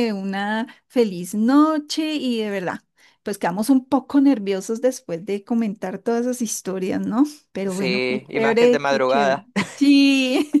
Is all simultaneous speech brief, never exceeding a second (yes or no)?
no